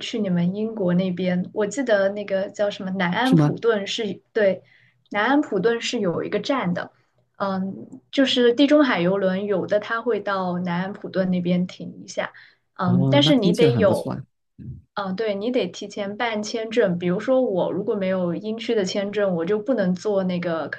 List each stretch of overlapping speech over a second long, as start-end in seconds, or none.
12.8-14.2